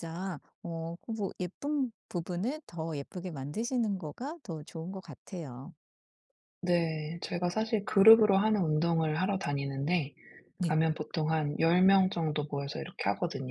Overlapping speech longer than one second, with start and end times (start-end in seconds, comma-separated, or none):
none